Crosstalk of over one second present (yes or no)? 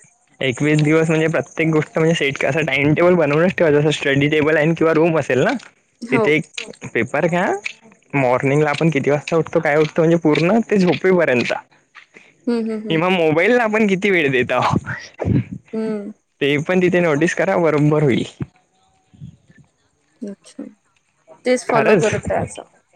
no